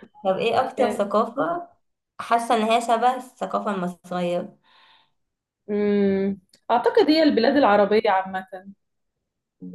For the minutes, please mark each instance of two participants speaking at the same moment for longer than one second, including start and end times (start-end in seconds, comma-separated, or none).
none